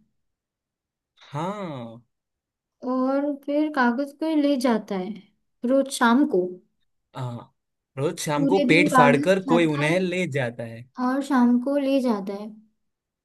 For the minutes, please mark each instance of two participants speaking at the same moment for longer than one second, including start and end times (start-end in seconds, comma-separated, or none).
8.4-10.0